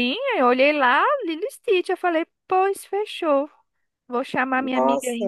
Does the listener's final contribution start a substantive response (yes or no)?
no